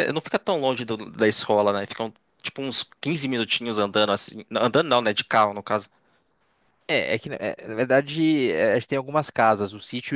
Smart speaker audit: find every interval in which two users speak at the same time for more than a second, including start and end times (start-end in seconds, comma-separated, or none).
none